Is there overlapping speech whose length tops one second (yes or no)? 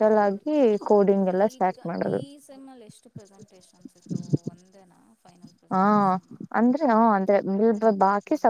no